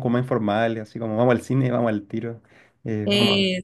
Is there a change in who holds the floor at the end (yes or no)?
no